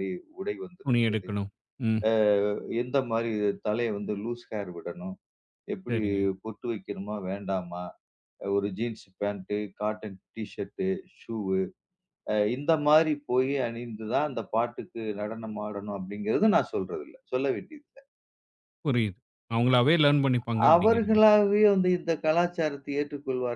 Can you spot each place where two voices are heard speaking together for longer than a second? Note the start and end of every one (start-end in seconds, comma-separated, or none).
none